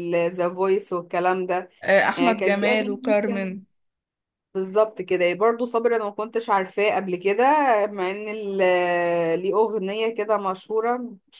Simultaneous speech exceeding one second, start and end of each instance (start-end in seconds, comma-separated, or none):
2.1-3.5